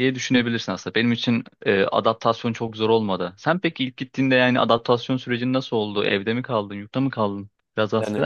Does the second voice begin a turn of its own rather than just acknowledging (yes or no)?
yes